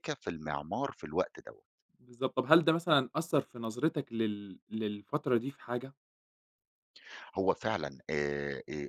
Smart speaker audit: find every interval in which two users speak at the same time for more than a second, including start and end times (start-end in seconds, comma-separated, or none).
none